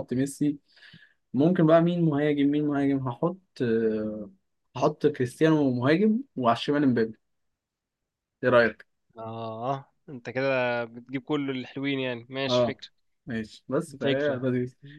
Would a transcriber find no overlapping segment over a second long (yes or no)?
yes